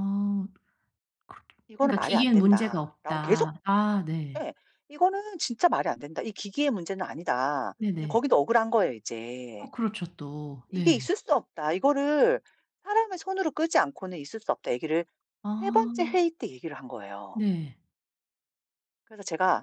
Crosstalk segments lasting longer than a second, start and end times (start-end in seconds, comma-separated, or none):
1.8-3.5